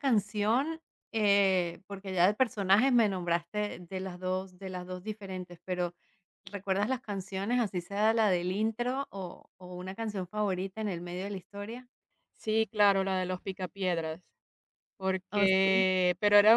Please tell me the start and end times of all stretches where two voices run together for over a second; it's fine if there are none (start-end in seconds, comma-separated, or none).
none